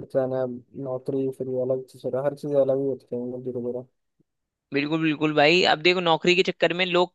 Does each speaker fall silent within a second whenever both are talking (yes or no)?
yes